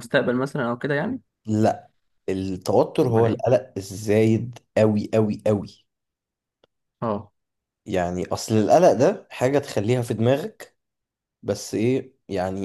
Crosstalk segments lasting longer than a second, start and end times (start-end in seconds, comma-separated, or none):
none